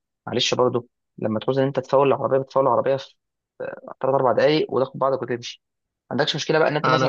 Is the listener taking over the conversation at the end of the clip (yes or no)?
no